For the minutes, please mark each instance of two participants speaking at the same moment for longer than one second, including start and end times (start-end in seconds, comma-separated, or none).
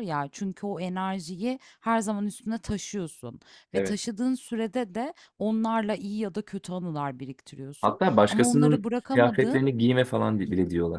7.8-9.7